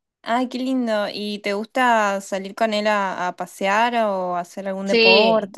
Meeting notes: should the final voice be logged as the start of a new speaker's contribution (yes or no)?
yes